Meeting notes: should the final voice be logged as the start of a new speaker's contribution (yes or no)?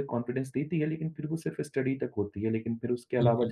no